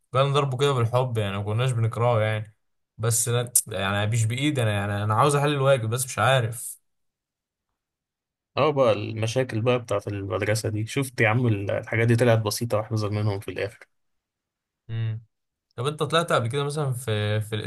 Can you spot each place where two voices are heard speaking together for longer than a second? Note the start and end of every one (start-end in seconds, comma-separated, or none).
none